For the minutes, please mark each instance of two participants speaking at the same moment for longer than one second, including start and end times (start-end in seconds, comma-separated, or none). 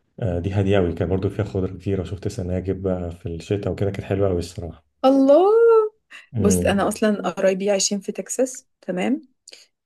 none